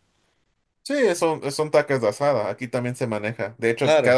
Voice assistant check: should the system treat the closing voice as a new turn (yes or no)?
no